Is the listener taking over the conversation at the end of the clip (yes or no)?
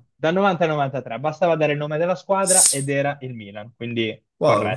yes